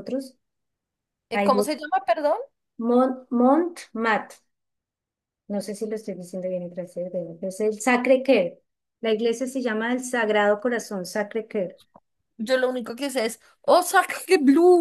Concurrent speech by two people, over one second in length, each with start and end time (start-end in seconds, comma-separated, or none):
none